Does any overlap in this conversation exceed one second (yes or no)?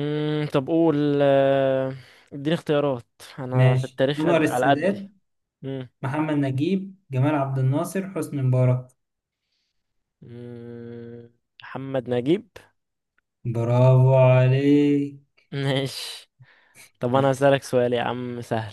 yes